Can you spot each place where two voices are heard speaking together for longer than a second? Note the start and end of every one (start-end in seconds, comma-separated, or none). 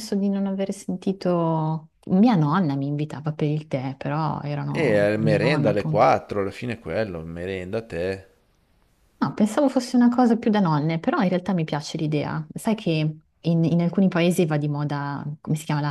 4.7-6.1